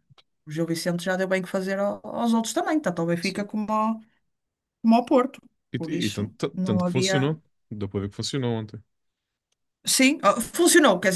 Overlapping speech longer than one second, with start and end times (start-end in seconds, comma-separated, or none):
5.8-7.3